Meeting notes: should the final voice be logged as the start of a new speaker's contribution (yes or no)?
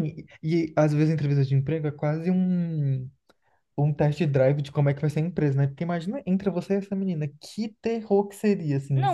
yes